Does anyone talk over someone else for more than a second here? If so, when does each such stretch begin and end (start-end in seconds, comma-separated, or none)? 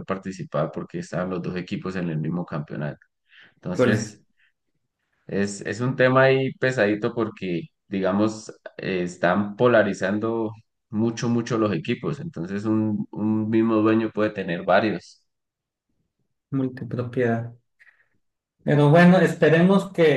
none